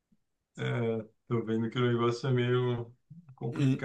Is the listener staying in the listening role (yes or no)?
no